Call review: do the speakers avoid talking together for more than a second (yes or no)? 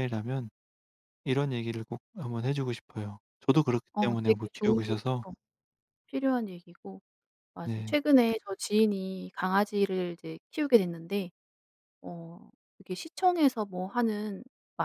no